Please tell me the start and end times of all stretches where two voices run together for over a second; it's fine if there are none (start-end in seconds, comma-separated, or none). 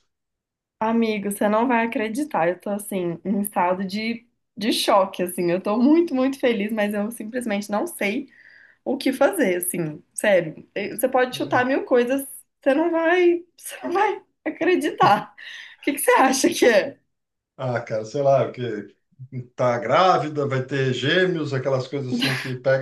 none